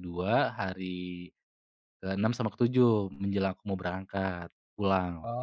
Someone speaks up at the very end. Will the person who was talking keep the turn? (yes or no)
no